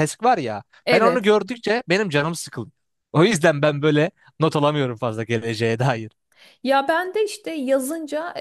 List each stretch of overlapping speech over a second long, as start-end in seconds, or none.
none